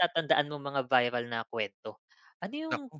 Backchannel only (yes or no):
yes